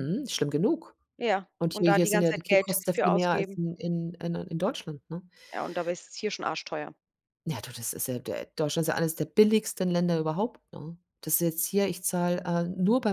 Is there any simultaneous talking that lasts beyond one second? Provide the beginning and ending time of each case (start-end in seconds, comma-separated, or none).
1.6-3.6